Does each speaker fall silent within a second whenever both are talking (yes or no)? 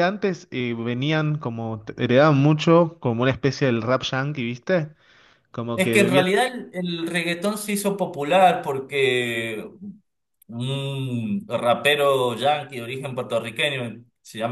yes